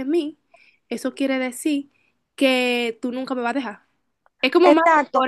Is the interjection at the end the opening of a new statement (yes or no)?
yes